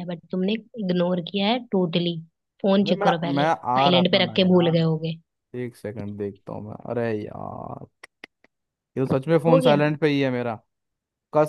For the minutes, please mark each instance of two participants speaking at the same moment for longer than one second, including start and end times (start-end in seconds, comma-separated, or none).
2.8-5.1